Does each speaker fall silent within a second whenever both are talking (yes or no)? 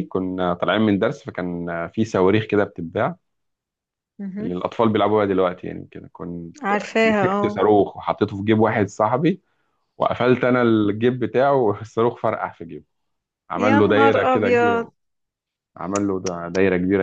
no